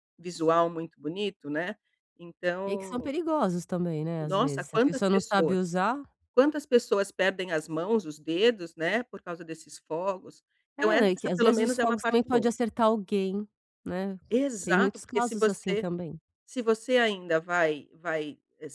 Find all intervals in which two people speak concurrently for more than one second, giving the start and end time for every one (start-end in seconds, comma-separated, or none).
4.2-5.6, 10.8-12.5, 14.6-15.8